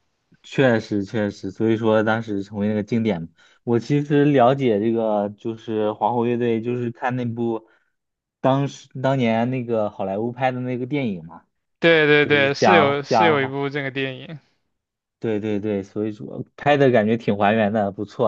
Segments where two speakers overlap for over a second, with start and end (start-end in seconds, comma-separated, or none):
12.2-13.5